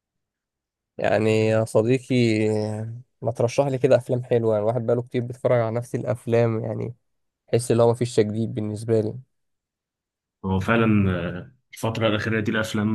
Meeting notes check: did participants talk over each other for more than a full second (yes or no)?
no